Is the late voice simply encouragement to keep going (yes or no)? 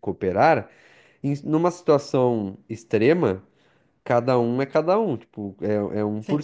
no